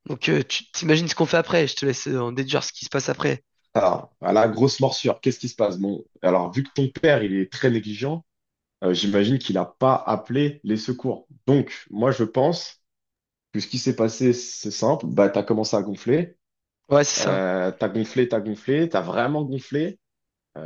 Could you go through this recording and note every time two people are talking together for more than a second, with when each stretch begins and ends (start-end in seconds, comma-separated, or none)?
none